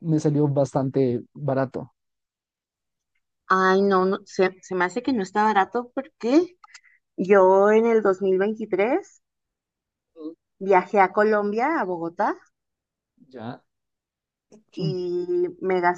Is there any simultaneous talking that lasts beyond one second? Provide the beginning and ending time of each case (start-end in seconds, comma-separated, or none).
none